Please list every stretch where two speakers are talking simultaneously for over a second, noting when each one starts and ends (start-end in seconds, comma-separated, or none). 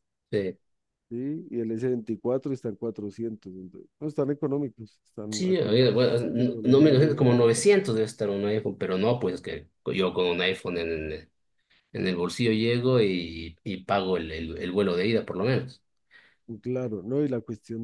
5.3-7.6